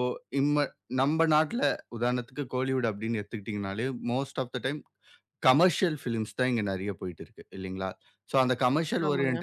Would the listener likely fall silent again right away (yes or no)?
yes